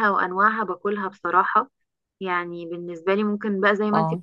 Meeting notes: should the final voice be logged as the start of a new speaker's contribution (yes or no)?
no